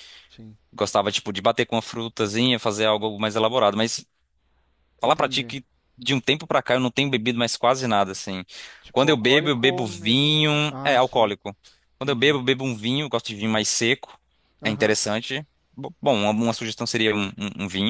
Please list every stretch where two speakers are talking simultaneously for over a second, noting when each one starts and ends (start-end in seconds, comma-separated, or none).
8.9-11.3